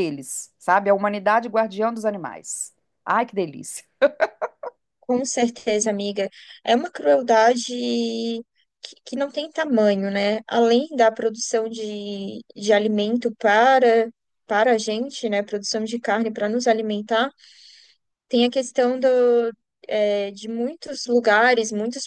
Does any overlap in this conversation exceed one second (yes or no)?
no